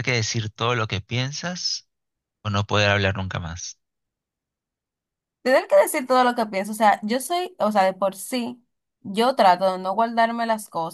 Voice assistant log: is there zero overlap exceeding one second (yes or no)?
yes